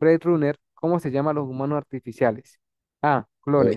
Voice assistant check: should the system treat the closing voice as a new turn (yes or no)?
no